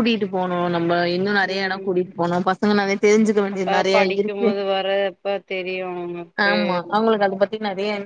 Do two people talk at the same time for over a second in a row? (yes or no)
no